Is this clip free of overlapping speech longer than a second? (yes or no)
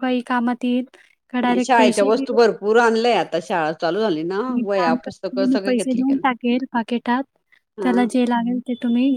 no